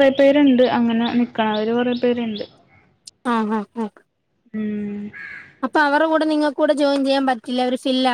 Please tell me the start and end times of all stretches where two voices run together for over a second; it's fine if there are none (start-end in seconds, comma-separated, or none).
none